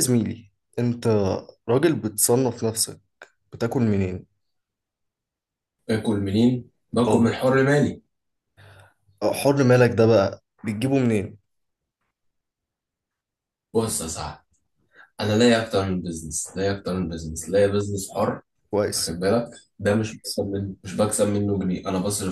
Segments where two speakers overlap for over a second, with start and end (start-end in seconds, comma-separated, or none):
none